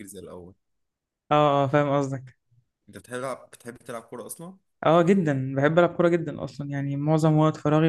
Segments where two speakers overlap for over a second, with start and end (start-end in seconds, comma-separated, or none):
none